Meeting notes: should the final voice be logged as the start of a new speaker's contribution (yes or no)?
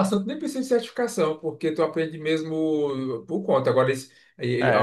yes